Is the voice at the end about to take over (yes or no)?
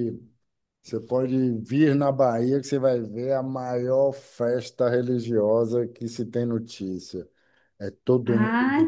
yes